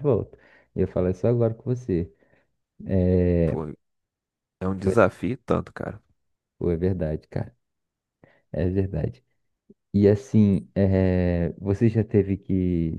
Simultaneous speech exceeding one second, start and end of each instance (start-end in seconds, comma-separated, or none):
none